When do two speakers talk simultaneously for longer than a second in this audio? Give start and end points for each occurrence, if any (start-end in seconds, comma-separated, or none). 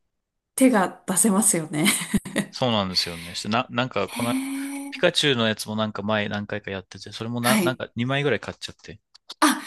none